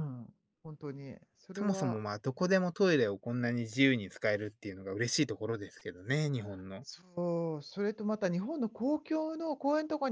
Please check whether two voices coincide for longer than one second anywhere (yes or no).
no